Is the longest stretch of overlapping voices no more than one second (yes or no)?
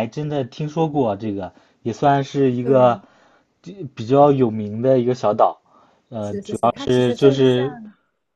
no